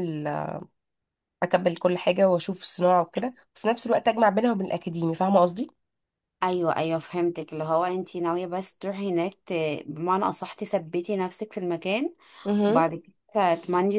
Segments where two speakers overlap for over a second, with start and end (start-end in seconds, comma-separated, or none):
none